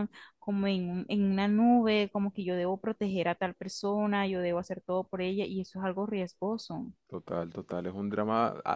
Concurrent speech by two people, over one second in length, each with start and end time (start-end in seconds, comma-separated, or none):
none